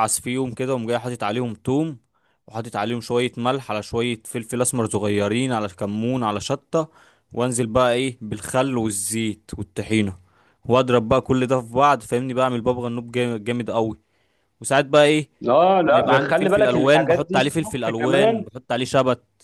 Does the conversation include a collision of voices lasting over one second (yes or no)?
yes